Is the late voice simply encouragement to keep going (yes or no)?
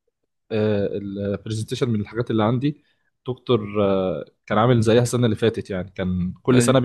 yes